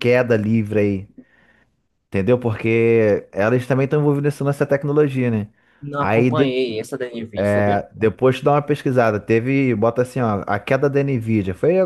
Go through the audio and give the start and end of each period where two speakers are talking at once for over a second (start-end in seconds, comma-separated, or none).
none